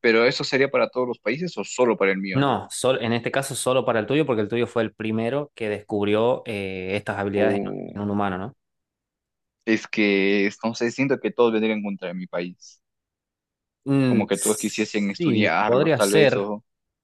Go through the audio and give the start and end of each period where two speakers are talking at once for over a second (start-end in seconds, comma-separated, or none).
14.1-16.5